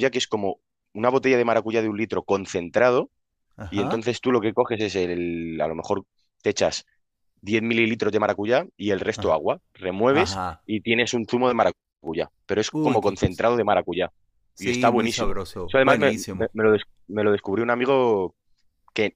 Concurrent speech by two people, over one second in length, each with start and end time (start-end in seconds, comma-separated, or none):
14.6-16.5